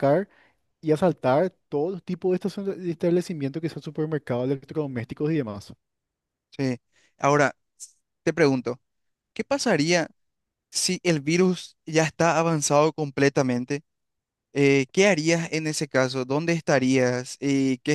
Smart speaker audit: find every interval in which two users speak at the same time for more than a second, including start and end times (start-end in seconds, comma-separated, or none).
none